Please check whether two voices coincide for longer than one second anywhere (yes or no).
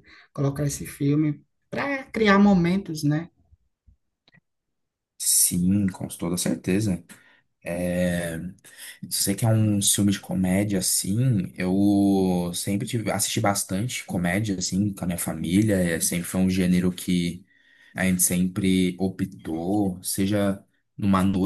no